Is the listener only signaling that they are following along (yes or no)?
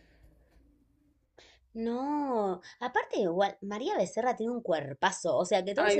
yes